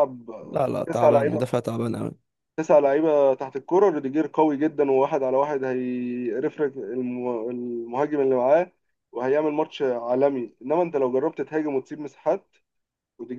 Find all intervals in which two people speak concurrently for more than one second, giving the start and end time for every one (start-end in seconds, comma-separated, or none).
none